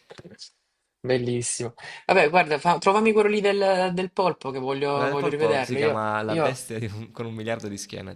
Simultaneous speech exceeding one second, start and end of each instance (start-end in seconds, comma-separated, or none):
4.9-6.6